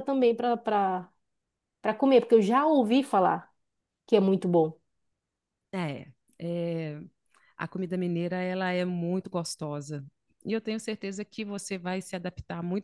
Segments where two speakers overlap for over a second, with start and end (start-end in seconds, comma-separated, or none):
none